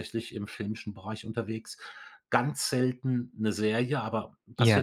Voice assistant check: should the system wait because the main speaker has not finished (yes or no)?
yes